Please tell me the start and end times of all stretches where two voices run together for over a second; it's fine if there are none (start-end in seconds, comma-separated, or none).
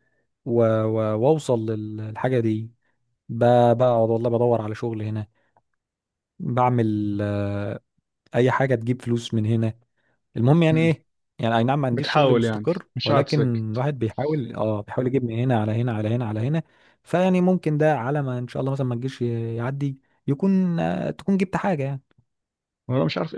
11.9-13.6